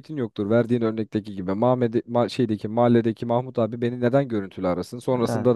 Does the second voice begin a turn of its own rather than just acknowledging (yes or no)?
no